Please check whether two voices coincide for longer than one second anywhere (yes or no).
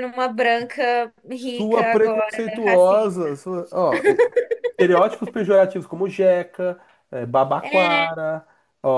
yes